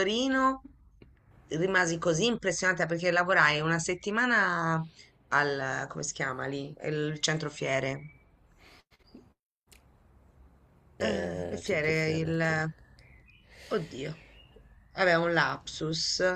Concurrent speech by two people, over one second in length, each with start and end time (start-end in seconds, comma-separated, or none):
11.0-12.6